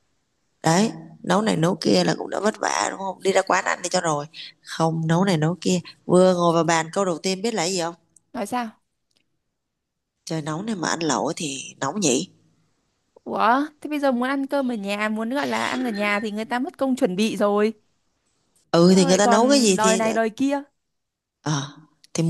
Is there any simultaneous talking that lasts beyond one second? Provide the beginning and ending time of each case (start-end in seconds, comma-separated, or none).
18.7-20.0